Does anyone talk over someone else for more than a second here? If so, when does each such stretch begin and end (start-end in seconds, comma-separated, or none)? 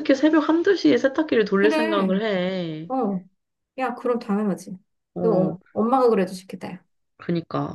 none